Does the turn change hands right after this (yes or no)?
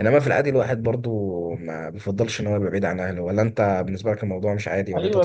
yes